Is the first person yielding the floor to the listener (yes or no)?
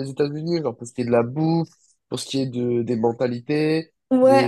yes